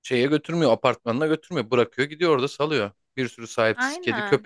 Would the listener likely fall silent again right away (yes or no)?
yes